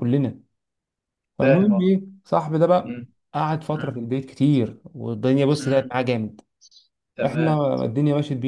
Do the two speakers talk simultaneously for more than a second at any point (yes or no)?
no